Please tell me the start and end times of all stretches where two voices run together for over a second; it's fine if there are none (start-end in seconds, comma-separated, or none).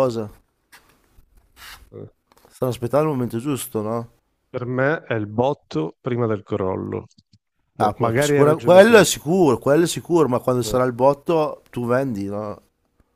7.8-9.0